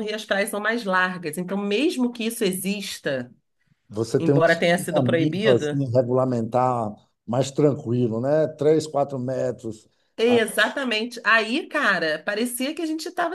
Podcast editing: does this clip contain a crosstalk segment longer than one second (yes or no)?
yes